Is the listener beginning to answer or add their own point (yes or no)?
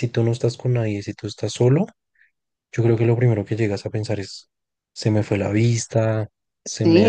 yes